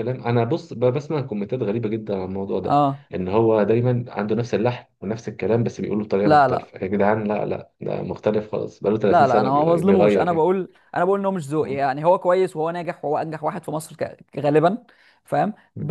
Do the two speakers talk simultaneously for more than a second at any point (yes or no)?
yes